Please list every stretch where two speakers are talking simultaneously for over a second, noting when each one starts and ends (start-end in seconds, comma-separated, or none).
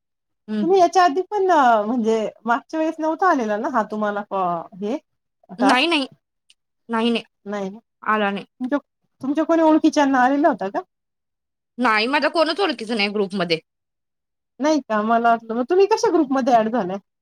none